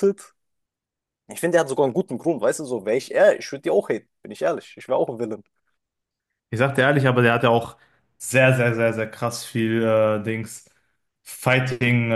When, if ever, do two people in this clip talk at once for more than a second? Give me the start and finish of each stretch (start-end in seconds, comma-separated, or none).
none